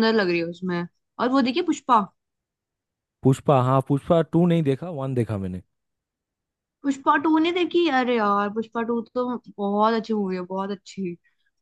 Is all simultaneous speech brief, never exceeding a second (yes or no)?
yes